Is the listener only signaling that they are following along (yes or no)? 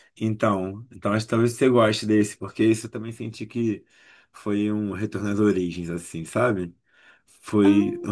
yes